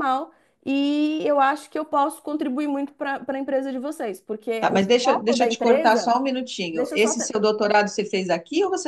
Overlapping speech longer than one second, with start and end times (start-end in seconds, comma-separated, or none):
4.6-6.1